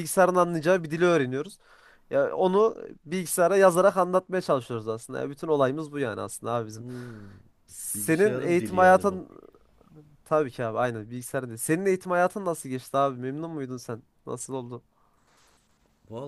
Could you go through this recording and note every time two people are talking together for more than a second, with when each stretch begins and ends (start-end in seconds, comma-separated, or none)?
8.0-9.2